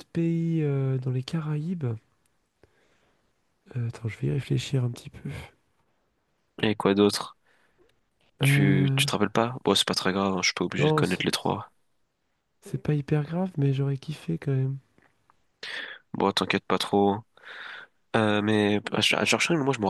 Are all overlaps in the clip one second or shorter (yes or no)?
yes